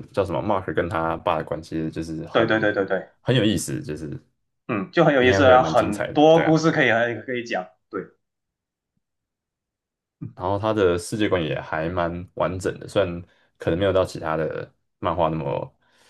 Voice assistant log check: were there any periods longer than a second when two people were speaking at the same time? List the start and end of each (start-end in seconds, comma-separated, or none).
5.2-6.6